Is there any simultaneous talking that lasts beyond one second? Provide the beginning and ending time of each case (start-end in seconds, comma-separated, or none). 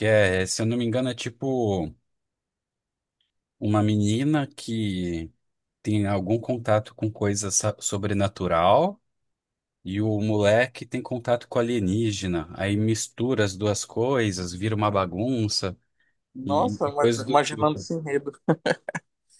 16.4-17.9